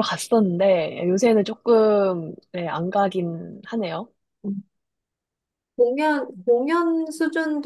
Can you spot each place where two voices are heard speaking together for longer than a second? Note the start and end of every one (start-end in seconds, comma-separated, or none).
none